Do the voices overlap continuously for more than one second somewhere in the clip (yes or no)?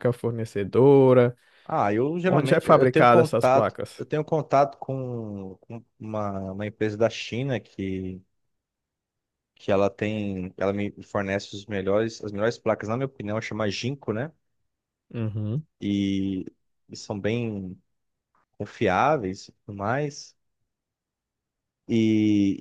yes